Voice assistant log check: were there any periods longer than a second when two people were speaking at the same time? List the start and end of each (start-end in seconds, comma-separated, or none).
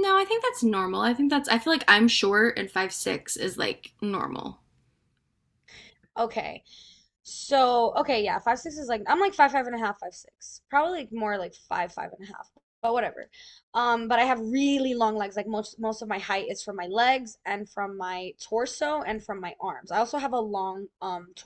none